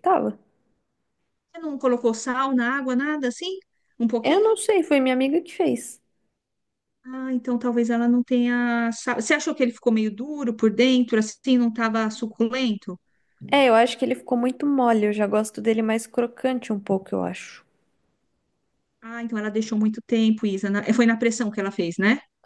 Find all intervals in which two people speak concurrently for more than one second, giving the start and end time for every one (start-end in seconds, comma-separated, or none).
none